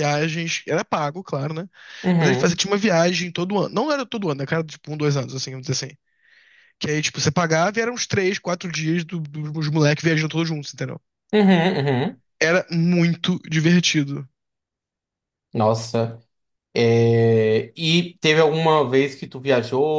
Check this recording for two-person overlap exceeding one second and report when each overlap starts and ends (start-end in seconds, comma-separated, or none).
none